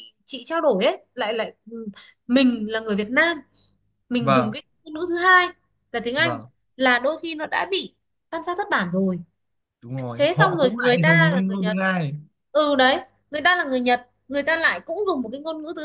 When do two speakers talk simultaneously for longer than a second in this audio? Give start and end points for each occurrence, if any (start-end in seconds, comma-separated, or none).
10.1-11.8